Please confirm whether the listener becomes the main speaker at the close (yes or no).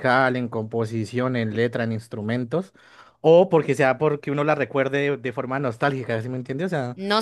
yes